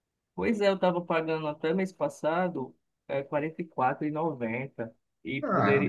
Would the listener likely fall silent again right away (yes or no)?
yes